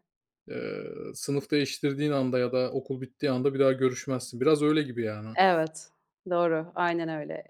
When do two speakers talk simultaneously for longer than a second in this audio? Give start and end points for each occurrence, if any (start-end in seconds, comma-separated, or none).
none